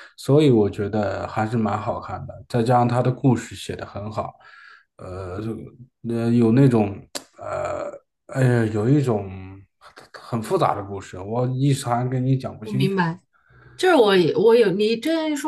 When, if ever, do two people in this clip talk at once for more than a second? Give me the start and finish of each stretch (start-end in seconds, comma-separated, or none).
none